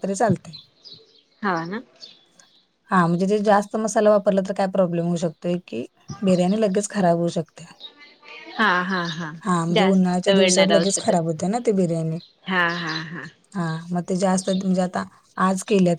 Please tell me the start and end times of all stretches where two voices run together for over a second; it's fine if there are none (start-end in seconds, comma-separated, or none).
9.8-11.2